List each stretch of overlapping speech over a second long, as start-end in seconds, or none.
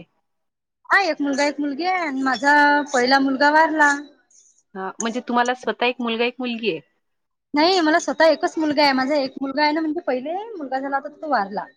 none